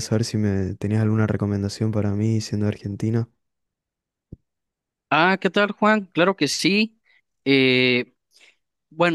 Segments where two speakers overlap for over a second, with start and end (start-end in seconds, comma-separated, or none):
none